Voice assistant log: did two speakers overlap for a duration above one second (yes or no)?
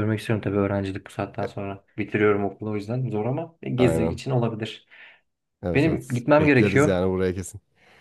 yes